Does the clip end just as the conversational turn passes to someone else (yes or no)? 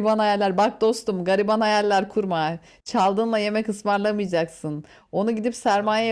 no